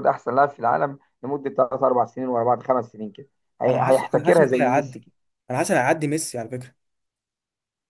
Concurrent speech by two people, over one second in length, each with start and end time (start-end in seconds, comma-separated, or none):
3.6-5.0